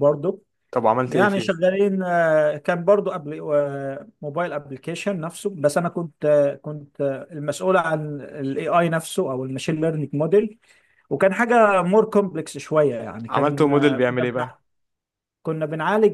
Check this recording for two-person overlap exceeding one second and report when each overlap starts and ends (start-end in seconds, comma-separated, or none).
13.3-14.6